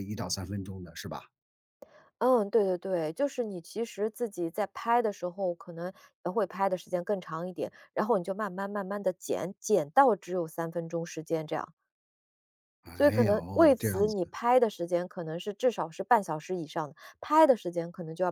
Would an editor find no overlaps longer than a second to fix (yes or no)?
no